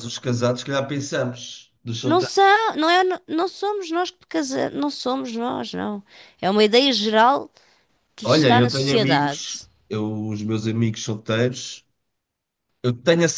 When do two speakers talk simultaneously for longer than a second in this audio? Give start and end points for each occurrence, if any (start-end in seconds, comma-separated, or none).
8.2-9.7